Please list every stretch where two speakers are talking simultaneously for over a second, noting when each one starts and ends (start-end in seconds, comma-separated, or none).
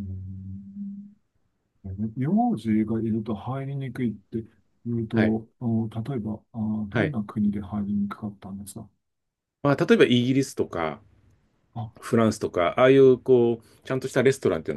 none